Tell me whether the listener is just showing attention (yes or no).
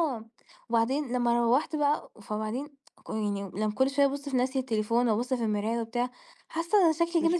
yes